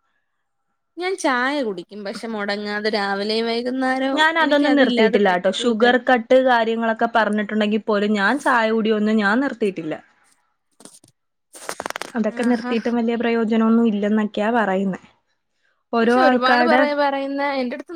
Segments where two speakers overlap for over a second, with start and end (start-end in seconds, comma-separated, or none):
none